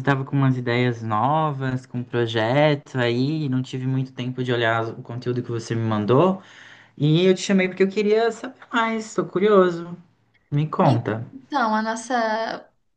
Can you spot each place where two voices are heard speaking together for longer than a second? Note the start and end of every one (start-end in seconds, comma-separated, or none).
none